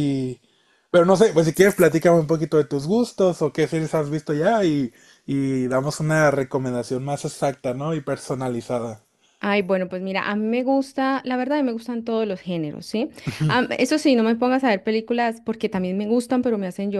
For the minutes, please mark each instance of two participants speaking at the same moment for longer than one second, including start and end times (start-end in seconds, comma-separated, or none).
none